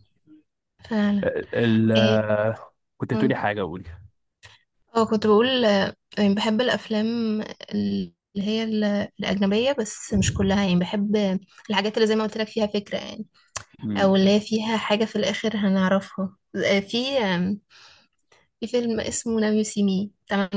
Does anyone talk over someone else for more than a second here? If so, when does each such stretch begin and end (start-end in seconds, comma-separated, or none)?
none